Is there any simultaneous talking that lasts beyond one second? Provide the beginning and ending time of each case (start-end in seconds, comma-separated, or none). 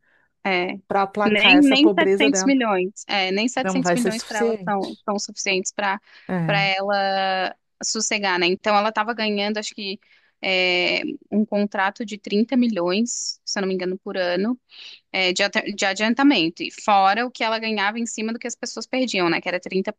1.3-2.5, 3.6-5.0